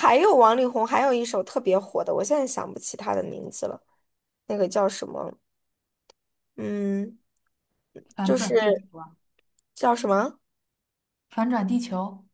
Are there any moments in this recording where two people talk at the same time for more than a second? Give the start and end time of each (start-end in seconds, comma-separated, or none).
none